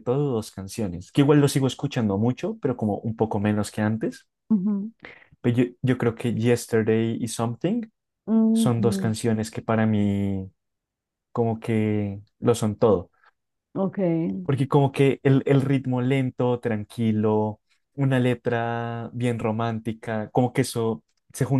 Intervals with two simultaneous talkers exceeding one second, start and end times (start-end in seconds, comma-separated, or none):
none